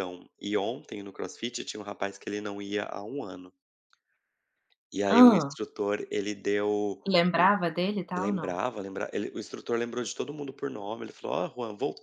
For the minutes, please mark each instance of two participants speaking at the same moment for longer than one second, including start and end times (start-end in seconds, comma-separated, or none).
none